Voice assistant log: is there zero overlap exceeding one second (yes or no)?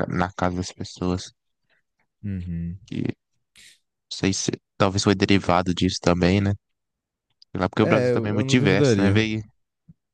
no